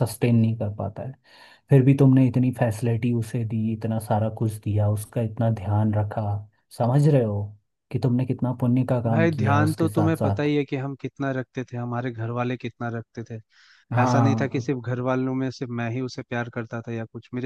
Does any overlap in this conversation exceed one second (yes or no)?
yes